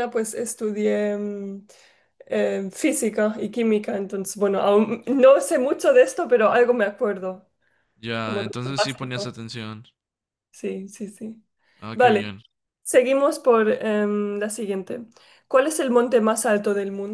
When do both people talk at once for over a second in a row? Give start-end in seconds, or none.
8.2-9.5